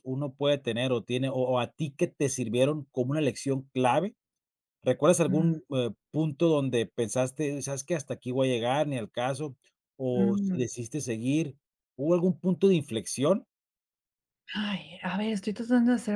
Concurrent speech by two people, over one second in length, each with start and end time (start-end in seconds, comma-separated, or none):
none